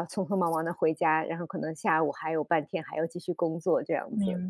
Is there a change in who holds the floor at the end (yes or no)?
yes